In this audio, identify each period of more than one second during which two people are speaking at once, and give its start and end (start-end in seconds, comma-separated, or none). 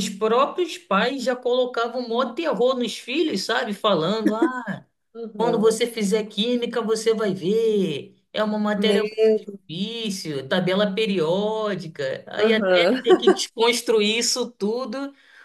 none